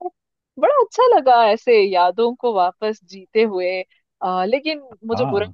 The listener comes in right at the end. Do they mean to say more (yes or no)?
no